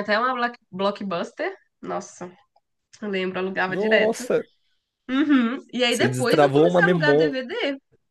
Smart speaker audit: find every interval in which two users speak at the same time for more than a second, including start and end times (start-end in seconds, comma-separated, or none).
5.9-7.4